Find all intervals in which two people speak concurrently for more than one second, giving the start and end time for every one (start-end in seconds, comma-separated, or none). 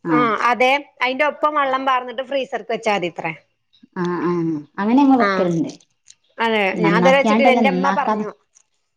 6.8-8.2